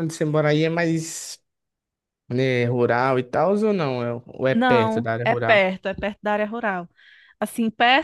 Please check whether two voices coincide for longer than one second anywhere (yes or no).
yes